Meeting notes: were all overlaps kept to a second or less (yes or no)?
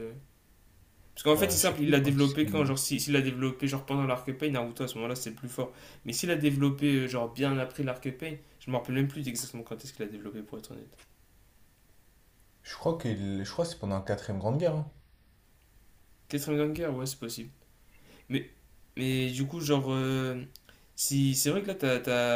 no